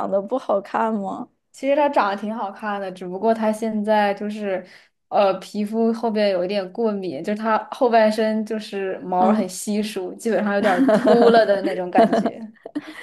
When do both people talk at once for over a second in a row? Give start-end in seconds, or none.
none